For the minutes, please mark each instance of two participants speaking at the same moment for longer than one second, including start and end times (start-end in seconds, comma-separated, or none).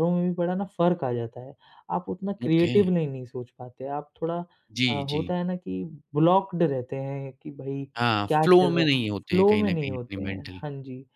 8.3-10.6